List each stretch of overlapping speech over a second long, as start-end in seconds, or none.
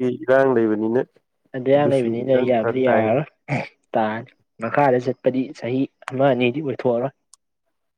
1.8-3.2